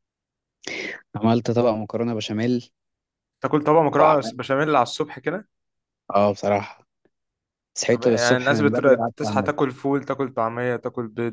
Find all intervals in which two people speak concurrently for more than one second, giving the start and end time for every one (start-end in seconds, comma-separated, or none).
7.9-9.5